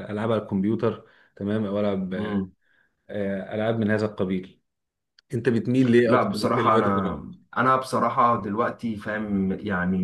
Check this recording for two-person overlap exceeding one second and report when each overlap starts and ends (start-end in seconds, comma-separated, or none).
6.0-7.4